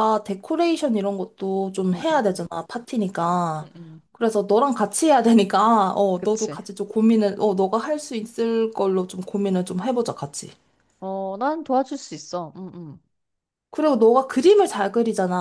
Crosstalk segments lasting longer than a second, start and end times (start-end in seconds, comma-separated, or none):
none